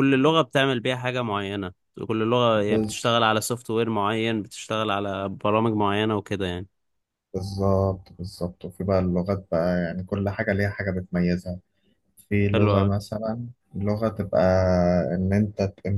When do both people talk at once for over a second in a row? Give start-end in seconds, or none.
none